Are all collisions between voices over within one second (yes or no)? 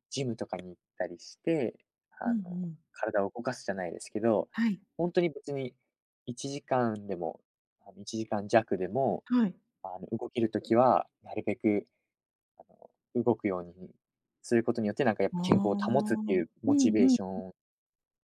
no